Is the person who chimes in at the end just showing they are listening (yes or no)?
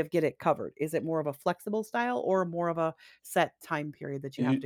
no